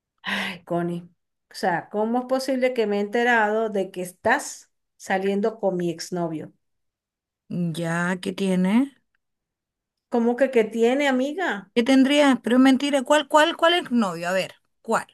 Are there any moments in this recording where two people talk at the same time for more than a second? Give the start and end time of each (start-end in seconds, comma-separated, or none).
none